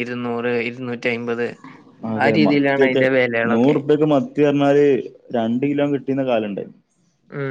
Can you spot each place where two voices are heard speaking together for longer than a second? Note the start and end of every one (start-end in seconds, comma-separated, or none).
none